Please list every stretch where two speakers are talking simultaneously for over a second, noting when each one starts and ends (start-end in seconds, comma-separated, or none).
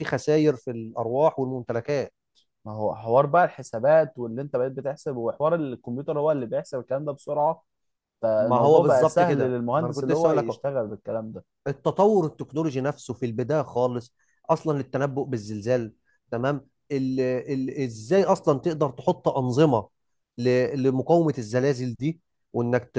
8.4-10.6